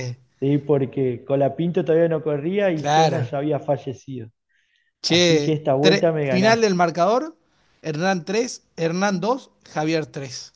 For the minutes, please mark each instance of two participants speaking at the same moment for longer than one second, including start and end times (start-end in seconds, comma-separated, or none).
5.1-6.7